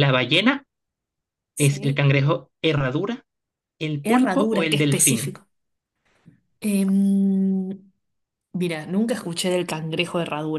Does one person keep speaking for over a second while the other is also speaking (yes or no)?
yes